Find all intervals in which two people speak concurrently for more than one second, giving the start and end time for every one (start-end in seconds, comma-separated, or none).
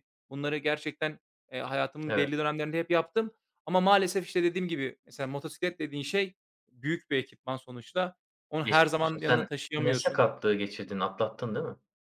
8.6-10.2